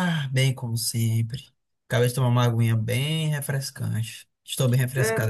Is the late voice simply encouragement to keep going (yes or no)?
no